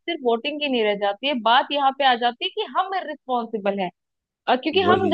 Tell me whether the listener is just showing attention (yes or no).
yes